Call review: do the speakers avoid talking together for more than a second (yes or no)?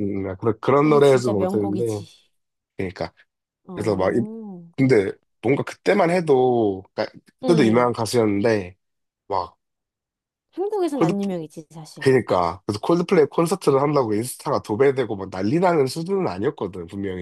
no